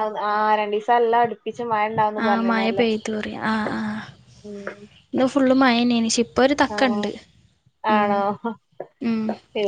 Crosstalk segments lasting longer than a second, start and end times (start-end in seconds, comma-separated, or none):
none